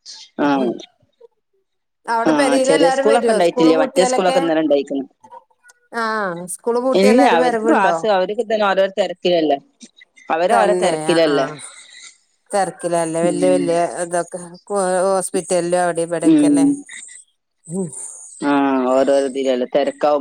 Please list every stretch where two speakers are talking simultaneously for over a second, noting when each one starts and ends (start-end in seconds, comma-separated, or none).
2.3-4.4